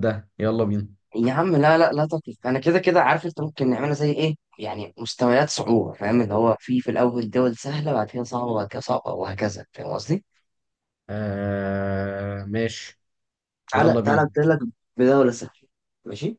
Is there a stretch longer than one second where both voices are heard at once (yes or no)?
no